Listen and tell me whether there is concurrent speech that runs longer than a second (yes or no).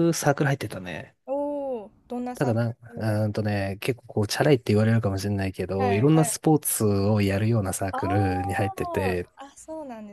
yes